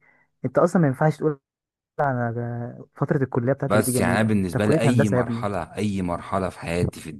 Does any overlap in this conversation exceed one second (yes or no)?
yes